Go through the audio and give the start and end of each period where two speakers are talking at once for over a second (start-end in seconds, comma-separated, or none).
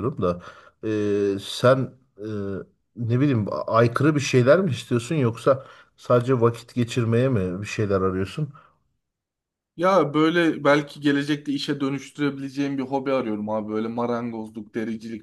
none